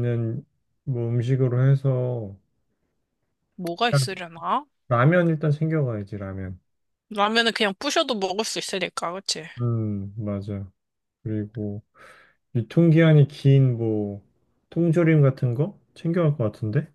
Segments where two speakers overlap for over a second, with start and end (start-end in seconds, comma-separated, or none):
none